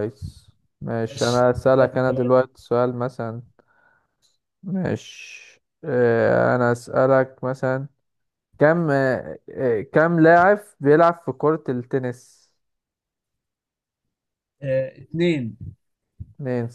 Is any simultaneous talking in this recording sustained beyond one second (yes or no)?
yes